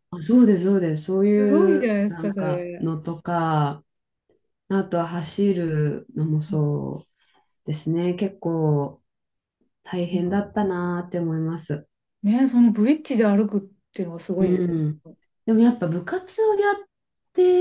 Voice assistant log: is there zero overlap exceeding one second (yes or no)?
no